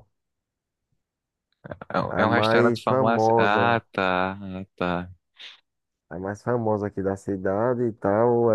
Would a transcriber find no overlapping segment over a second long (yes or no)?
no